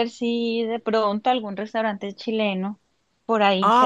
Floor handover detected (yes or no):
yes